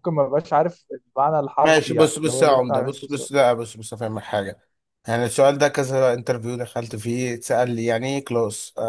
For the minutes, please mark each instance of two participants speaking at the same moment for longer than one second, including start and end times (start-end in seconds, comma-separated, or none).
1.6-3.3